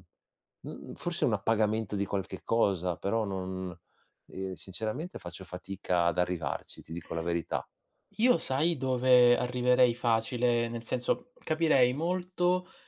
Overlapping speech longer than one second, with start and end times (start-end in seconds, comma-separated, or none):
none